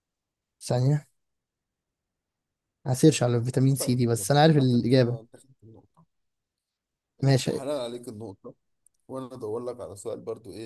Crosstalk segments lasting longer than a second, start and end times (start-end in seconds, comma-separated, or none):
3.8-5.2